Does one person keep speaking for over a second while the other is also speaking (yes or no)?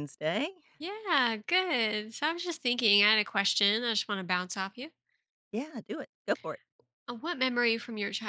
no